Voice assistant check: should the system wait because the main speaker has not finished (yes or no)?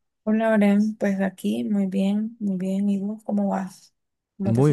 no